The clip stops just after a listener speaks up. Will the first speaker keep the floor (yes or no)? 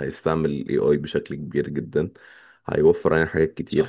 yes